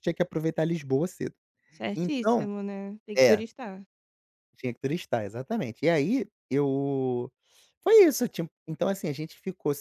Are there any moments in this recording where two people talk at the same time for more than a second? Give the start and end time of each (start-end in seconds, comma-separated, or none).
none